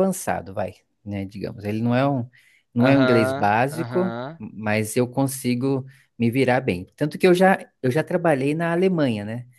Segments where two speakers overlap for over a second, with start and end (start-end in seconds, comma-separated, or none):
2.8-4.4